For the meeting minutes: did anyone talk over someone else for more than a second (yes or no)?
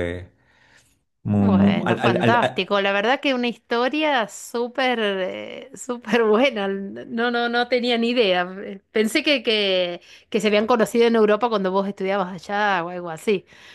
yes